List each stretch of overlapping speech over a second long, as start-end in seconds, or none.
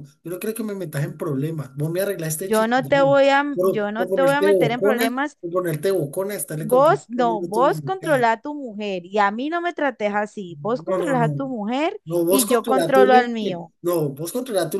2.5-5.4, 6.6-8.2, 12.1-13.7